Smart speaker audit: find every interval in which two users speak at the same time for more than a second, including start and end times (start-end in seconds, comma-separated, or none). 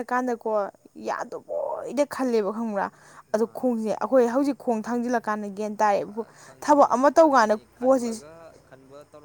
6.6-8.2